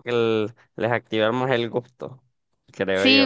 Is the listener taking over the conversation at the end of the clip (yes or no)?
yes